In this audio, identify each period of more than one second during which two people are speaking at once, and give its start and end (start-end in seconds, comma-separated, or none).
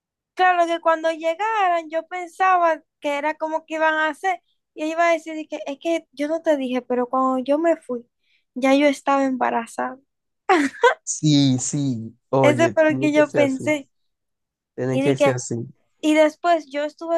12.4-13.6